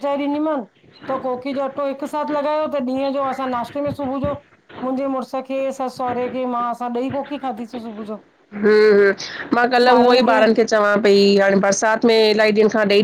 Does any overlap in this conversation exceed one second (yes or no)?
no